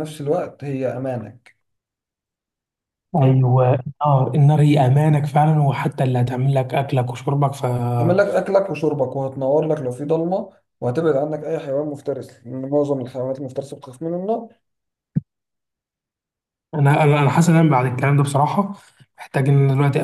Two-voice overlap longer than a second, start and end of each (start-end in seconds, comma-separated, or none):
none